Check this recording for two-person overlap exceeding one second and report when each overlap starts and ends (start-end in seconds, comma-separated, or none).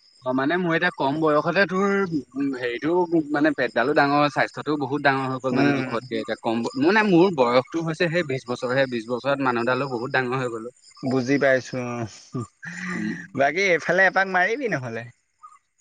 none